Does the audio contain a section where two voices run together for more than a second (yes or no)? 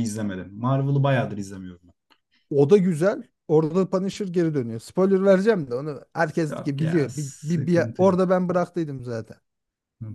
yes